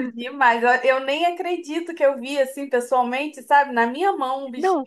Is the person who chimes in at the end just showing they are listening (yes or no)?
no